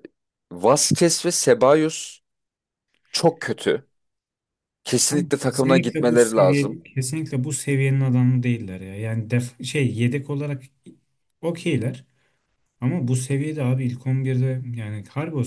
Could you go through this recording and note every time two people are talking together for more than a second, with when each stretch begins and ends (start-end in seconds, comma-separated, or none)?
5.0-6.8